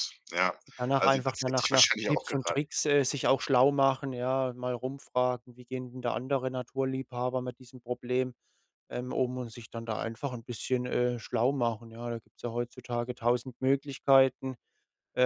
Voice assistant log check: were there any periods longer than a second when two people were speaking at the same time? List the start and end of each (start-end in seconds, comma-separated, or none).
1.0-2.6